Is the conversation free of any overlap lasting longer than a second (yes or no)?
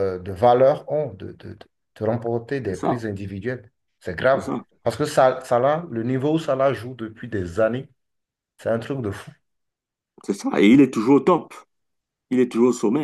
yes